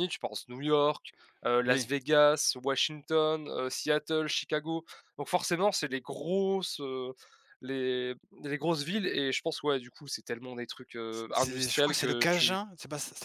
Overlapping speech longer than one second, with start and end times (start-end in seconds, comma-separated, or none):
11.3-12.6